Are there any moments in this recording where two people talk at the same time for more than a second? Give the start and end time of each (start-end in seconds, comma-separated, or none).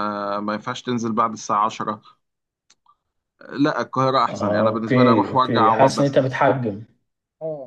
4.3-6.2